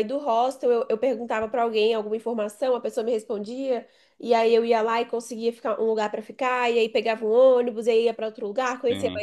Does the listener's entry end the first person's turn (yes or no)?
no